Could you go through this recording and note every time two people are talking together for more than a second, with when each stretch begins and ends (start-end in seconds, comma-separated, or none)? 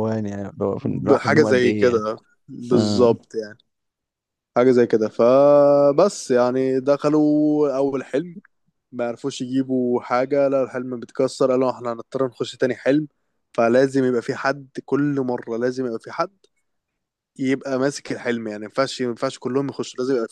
0.8-2.0